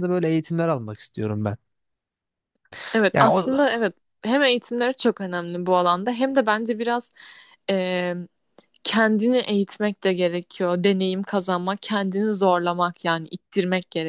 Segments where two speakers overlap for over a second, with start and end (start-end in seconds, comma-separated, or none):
none